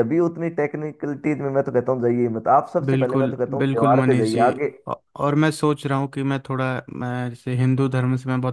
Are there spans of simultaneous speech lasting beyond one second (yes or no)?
yes